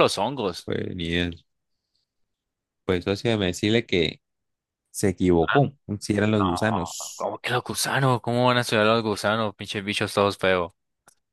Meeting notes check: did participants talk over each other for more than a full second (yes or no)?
no